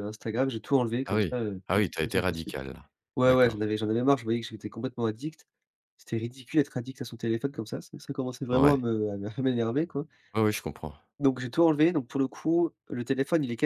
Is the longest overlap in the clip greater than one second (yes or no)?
yes